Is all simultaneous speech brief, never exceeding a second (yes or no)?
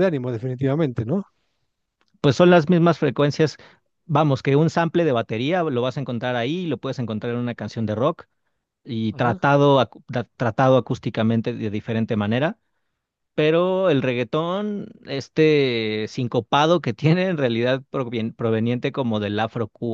yes